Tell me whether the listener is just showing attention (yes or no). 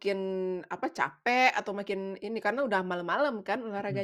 no